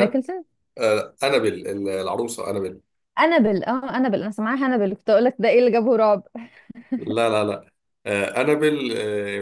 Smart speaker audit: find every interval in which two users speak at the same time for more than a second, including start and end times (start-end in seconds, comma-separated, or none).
none